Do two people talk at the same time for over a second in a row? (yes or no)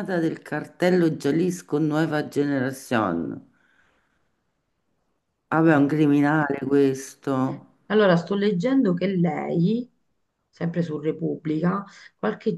no